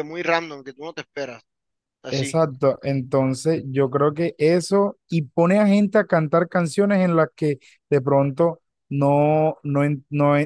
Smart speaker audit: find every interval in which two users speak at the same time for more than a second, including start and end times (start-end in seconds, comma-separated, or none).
none